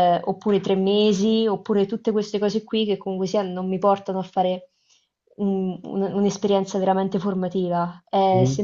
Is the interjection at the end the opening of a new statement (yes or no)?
no